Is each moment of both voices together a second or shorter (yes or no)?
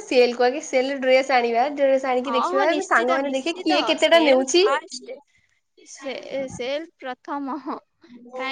no